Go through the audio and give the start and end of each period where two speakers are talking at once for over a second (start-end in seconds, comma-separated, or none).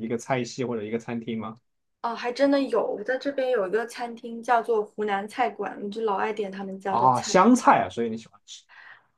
none